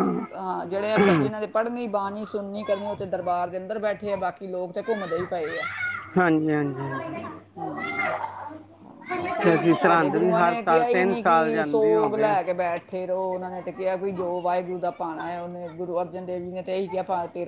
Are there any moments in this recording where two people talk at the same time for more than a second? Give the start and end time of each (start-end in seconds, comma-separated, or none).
9.4-12.4